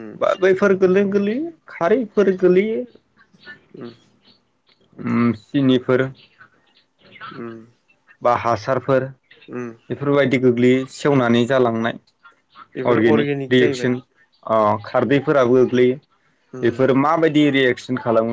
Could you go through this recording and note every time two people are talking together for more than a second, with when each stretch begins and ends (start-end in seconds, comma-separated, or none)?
none